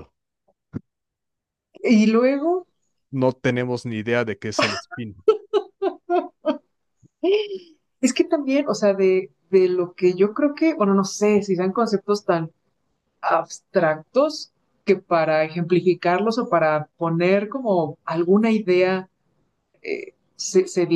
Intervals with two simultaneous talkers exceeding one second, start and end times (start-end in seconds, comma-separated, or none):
none